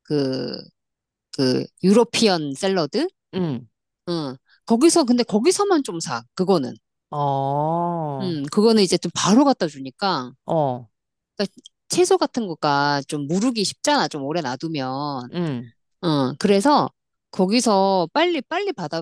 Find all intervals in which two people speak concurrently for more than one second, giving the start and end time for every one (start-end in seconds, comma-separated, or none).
none